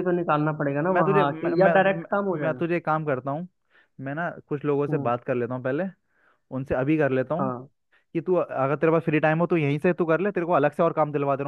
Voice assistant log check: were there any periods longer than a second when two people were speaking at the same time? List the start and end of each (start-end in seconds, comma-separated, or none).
0.9-2.6